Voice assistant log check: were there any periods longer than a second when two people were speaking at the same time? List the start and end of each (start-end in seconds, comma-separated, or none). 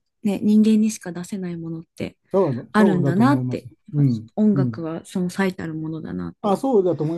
2.7-4.8